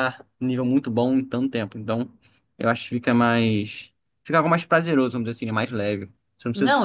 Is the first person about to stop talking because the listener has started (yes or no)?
yes